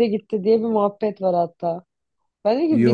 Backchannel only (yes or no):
yes